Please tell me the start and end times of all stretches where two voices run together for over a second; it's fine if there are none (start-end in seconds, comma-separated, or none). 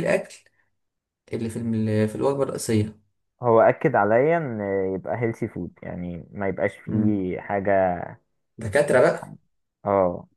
none